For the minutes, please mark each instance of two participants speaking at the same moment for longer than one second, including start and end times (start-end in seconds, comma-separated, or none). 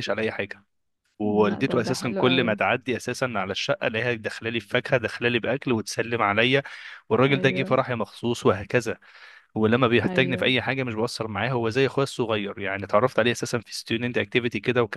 1.2-2.6